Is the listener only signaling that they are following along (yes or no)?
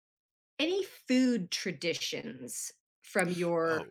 no